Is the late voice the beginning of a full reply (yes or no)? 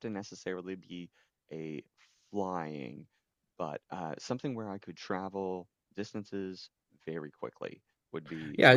yes